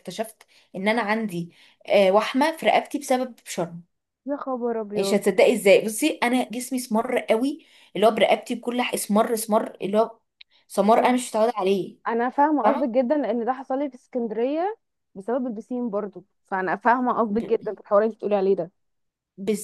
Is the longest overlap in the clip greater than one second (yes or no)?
no